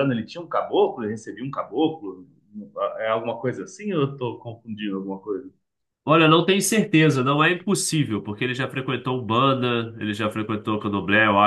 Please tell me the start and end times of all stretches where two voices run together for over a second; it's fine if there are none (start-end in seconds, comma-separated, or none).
none